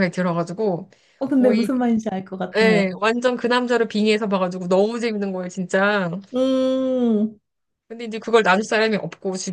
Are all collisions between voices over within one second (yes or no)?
yes